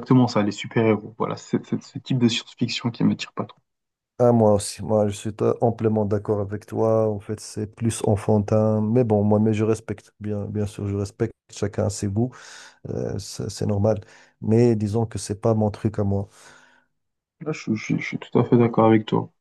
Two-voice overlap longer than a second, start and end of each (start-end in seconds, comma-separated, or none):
none